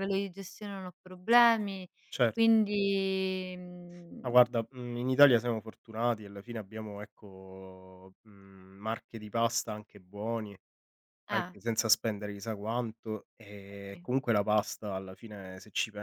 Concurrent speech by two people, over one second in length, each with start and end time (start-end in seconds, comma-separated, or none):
none